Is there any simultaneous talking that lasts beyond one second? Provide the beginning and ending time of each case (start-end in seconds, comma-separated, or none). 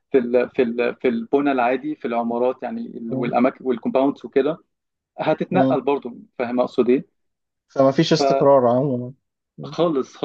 none